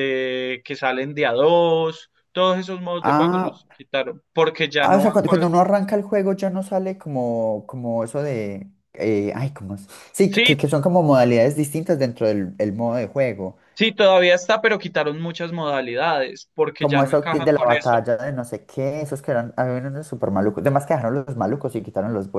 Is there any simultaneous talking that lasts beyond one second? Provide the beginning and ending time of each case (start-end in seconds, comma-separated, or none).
16.8-18.0